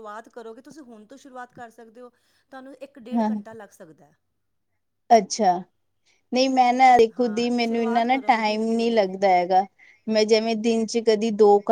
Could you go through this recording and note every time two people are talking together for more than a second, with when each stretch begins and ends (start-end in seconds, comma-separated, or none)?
7.2-9.0